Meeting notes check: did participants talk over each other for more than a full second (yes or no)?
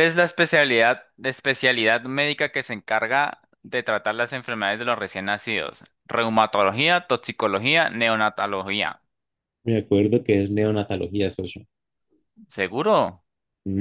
no